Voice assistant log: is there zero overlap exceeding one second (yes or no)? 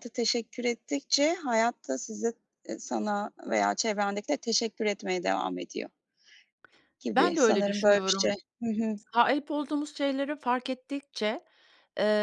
no